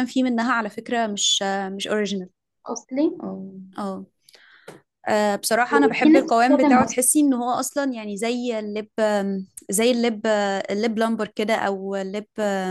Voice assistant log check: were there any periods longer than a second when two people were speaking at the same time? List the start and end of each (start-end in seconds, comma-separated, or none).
5.7-7.0